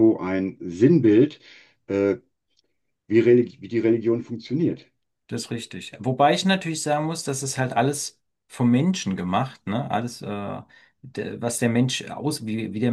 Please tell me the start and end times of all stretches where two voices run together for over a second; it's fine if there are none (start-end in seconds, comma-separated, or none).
none